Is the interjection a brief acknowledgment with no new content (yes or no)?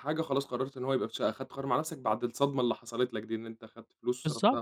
no